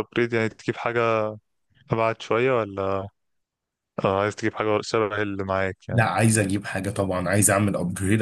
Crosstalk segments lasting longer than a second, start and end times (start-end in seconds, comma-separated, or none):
none